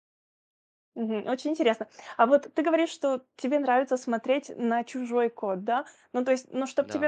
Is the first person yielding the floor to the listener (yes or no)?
no